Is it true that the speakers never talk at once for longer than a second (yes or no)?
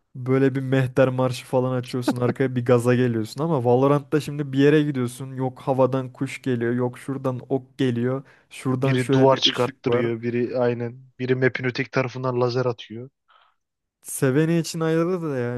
no